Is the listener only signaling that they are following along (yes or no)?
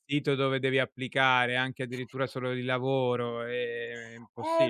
no